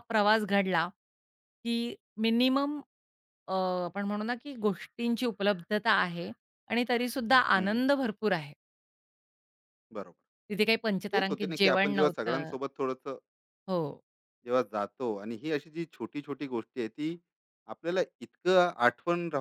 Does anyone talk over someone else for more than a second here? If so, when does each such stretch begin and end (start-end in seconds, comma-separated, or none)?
11.2-12.5